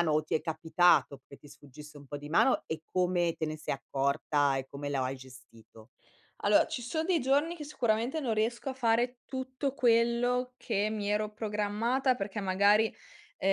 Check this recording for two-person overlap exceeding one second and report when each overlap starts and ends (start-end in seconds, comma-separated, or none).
none